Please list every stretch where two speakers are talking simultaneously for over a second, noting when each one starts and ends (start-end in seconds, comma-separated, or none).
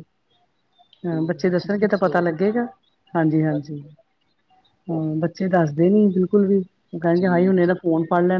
1.1-2.3